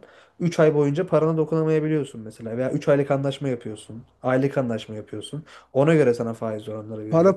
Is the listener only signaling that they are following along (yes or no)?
no